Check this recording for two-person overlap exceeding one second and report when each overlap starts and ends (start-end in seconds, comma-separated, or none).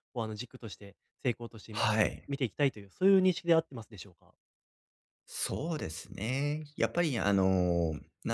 none